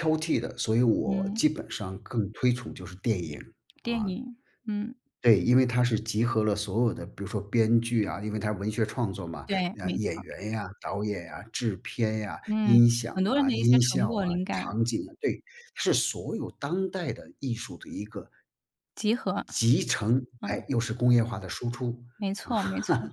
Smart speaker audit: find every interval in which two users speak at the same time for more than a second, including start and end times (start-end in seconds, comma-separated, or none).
12.5-14.6